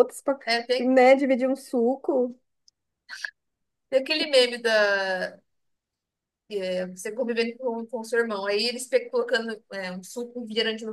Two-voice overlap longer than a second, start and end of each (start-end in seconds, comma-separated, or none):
none